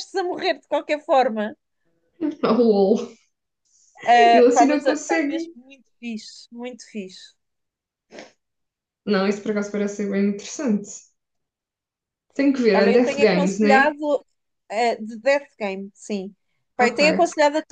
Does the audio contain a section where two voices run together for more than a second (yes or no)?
yes